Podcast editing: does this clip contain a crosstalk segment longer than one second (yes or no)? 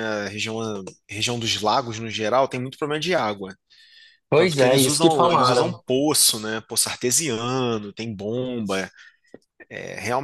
yes